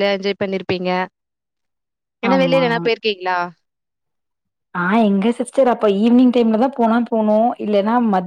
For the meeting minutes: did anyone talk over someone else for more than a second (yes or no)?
no